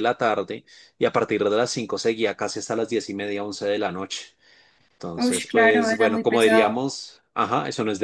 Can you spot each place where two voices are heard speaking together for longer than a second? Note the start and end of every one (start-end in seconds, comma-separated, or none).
5.2-6.8